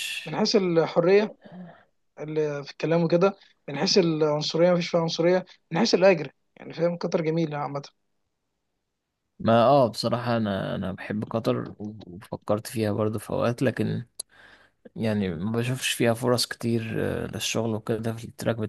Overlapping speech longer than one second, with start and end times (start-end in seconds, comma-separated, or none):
none